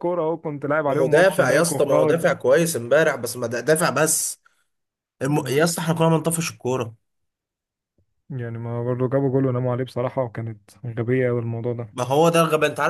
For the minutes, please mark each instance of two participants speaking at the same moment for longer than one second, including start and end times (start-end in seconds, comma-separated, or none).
0.9-2.2